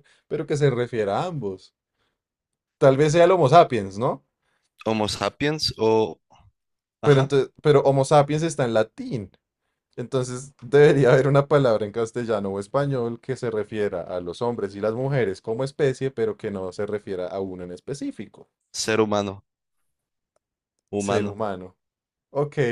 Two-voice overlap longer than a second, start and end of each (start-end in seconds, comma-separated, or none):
none